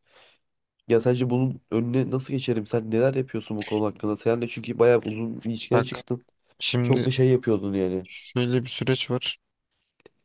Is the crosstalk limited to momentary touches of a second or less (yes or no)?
yes